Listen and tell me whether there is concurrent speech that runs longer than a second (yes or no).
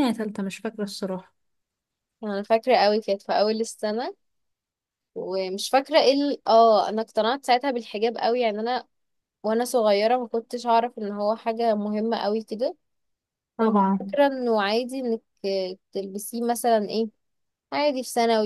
no